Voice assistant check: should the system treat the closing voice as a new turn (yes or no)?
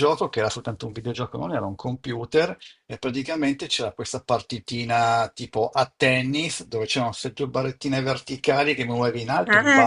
no